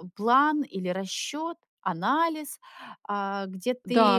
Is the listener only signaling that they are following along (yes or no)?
no